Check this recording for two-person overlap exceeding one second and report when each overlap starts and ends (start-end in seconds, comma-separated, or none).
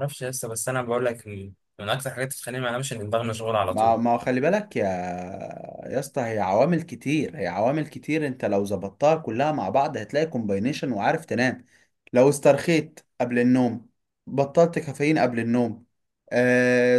none